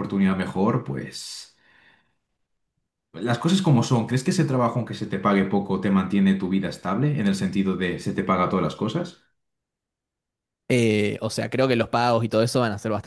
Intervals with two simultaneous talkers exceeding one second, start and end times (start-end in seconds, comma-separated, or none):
none